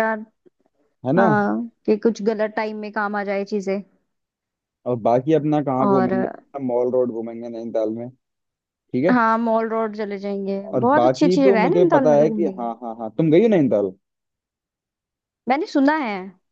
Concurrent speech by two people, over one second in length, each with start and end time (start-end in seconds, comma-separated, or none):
10.7-12.7